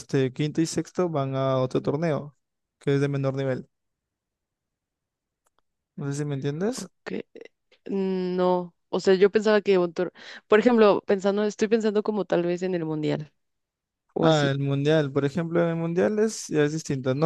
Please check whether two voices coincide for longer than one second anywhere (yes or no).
no